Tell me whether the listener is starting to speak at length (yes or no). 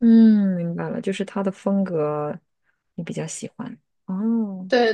yes